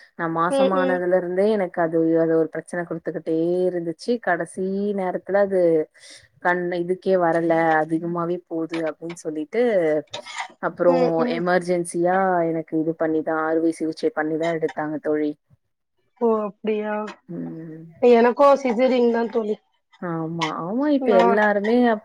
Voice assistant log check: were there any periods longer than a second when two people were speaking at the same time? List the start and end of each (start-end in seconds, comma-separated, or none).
none